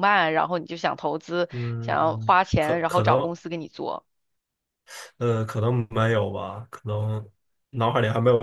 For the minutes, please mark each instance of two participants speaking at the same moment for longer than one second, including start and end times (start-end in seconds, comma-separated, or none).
1.5-3.3